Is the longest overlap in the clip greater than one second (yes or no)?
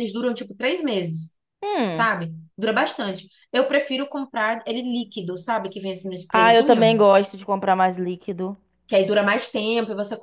no